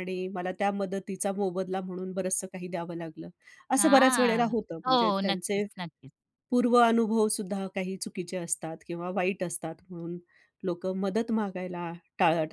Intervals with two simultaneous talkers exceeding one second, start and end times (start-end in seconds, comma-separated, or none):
3.8-5.6